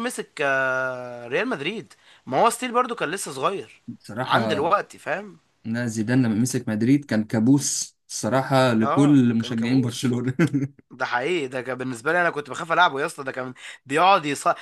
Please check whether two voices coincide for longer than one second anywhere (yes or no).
yes